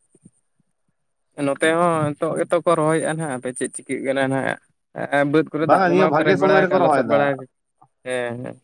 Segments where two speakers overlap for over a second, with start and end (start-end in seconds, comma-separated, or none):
5.6-7.3